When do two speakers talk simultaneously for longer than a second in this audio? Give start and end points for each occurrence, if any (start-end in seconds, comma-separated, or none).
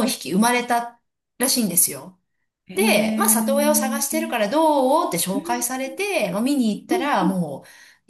2.7-4.3